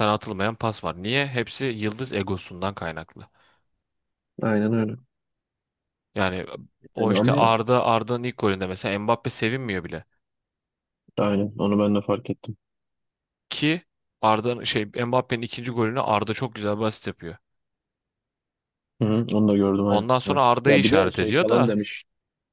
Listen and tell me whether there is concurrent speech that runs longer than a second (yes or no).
yes